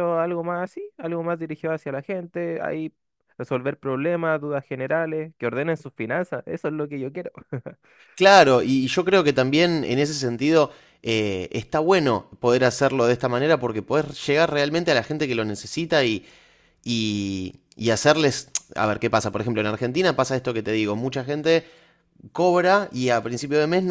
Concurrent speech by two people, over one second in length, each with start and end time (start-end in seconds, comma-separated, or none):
none